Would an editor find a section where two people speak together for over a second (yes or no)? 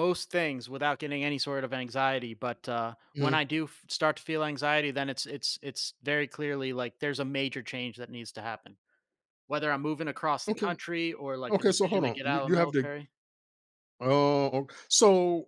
yes